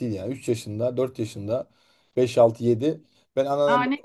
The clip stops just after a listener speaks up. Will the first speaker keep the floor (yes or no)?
yes